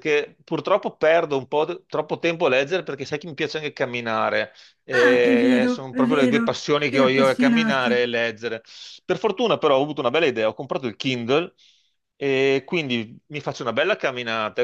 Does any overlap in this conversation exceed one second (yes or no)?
yes